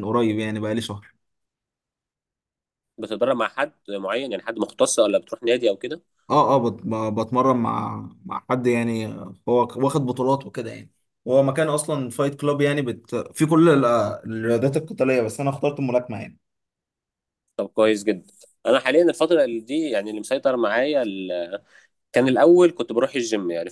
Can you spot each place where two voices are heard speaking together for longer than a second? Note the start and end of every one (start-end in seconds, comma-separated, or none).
none